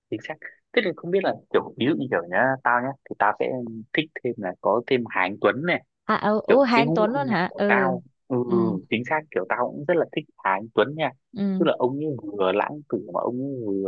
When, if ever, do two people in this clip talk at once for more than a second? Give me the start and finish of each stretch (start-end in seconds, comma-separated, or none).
6.5-7.9